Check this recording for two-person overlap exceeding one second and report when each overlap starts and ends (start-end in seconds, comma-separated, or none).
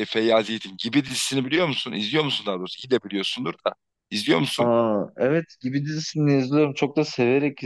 none